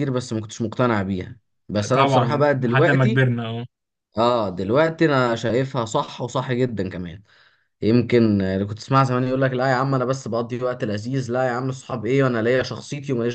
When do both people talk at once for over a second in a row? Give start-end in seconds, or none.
1.9-3.2